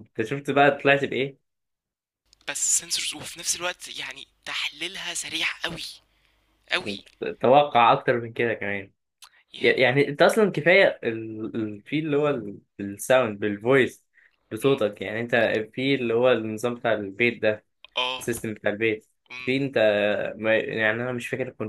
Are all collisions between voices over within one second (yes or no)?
yes